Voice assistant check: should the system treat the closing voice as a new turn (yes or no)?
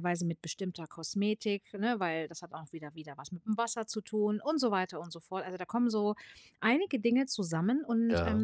no